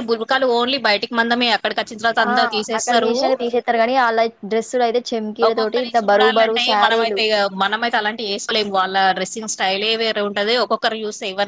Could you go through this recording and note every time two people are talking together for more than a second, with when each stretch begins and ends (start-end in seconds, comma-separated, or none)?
none